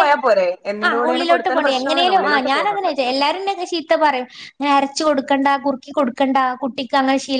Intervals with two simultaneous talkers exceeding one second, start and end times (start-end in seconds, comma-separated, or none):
0.9-2.9